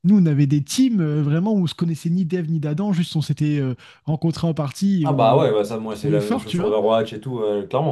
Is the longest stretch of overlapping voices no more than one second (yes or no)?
no